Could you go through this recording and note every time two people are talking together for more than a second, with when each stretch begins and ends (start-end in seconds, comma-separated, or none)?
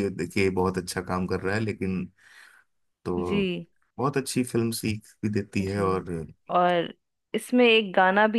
none